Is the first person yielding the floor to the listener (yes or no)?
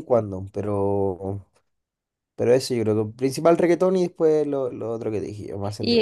yes